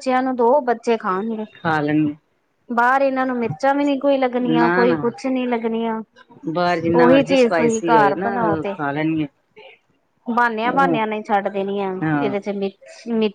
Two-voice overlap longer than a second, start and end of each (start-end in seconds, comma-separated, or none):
6.9-8.3